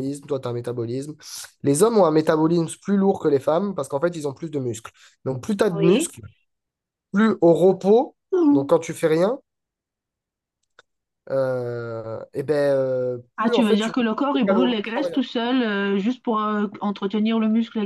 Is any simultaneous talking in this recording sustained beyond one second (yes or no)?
yes